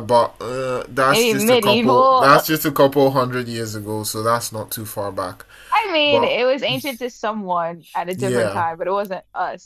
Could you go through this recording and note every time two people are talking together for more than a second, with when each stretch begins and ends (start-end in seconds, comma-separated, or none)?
1.1-2.4